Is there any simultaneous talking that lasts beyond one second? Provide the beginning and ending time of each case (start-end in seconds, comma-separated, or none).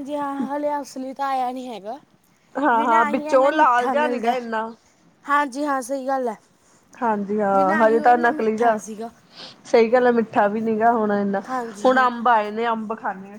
2.8-4.3